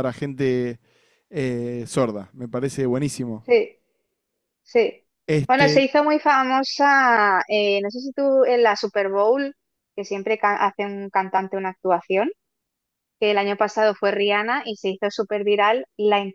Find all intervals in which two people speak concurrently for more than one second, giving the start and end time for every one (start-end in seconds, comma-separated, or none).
none